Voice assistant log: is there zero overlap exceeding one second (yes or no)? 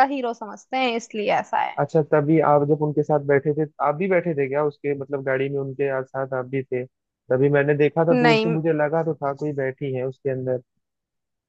yes